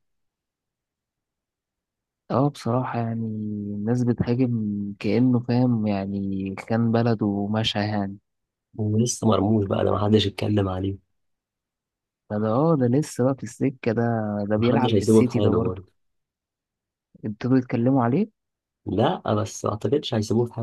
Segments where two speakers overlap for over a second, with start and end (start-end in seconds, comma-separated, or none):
14.6-15.8